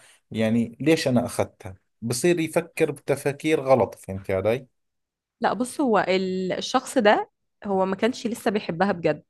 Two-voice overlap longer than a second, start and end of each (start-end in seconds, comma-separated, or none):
none